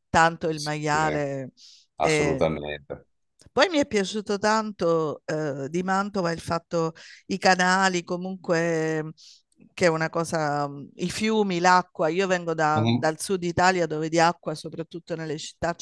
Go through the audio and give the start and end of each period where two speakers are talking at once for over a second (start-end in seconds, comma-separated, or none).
none